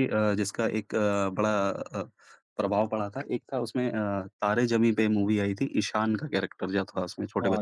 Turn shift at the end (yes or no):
yes